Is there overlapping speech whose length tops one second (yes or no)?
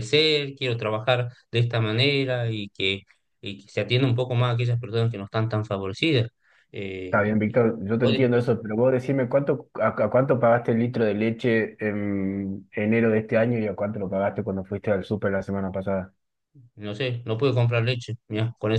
no